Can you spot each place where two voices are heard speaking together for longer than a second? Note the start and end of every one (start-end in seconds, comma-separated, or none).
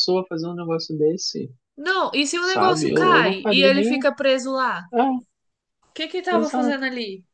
2.4-4.0